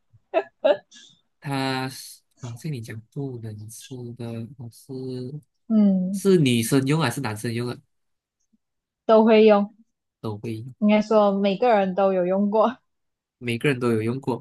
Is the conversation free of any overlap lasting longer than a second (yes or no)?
yes